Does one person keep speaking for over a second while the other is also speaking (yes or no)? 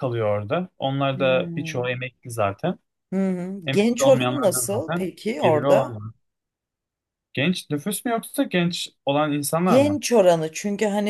yes